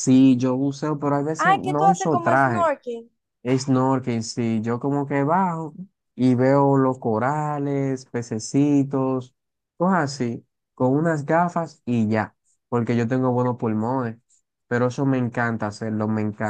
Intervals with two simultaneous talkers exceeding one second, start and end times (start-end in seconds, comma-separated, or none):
1.4-2.7